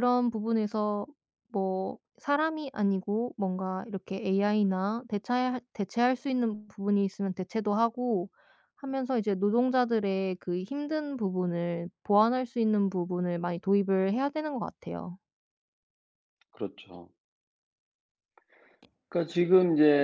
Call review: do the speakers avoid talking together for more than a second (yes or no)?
yes